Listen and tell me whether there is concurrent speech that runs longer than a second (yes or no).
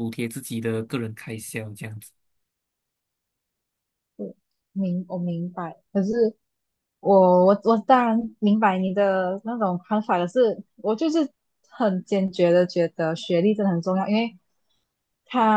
no